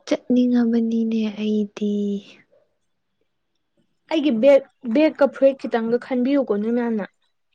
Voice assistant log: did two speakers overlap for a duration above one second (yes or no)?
no